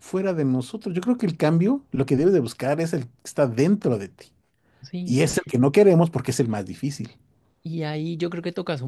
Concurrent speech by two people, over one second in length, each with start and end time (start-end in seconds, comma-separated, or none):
none